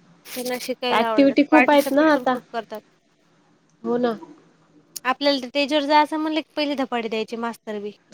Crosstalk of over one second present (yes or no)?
yes